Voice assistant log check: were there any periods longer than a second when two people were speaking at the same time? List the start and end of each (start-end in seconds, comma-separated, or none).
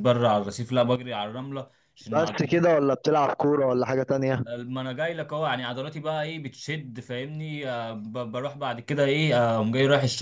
none